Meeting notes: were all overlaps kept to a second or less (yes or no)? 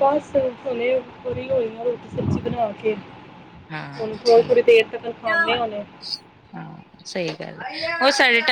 yes